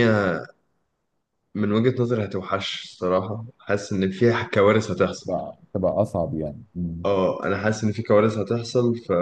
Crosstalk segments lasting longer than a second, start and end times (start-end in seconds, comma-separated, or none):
none